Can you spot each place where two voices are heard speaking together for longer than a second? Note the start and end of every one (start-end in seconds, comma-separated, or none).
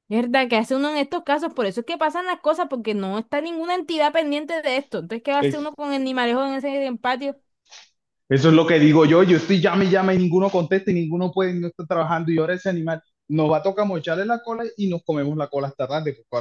none